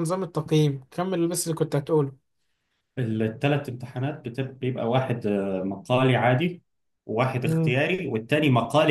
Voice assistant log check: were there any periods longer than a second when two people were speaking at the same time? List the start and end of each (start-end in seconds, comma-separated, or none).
none